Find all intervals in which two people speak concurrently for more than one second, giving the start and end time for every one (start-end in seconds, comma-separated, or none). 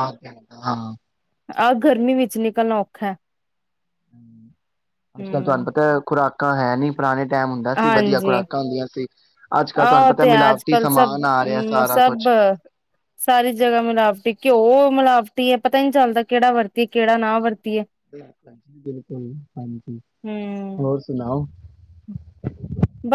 9.8-12.2